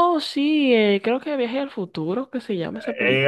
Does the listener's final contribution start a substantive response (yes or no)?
yes